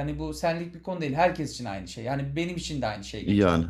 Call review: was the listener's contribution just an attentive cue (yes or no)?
yes